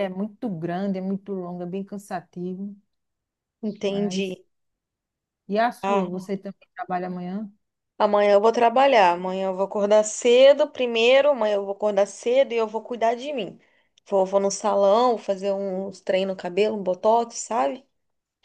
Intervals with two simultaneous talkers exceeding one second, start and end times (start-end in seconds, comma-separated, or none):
none